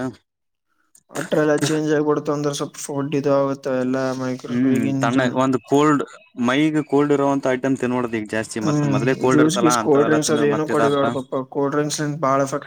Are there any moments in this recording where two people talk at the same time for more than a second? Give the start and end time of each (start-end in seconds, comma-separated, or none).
8.6-11.1